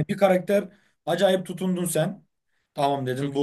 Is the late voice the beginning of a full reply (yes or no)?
no